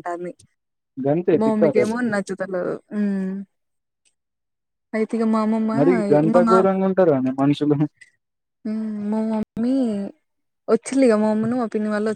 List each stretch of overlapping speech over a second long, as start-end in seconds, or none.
none